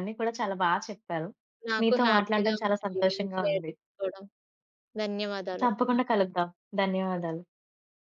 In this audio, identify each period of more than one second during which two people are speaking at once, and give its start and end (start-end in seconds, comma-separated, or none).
1.8-3.7